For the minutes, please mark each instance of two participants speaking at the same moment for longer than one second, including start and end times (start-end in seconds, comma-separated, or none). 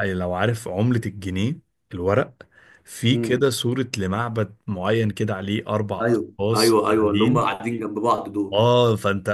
6.0-7.5